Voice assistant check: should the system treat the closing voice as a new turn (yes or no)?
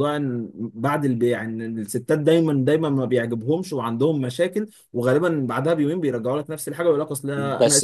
yes